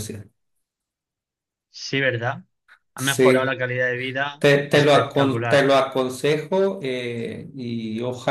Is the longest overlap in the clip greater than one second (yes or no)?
yes